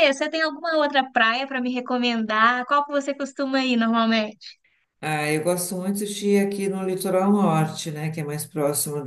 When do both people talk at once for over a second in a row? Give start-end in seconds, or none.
none